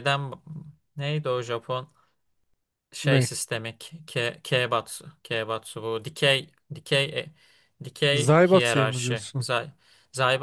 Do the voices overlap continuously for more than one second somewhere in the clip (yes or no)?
yes